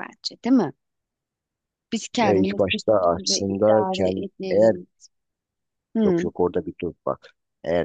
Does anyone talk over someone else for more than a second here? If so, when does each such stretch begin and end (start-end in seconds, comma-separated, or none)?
2.2-4.7